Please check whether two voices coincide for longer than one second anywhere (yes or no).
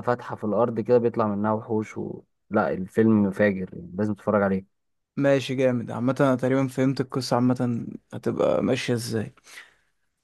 no